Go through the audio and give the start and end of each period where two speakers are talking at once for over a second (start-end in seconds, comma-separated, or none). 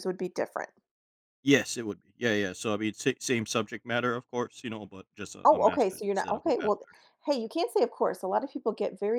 5.4-6.8